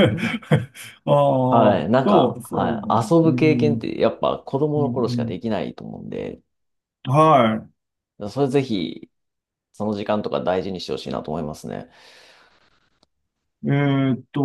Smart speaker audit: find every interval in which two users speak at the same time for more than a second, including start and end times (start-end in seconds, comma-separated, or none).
1.5-3.9